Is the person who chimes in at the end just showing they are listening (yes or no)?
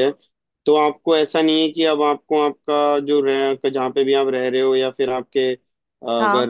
yes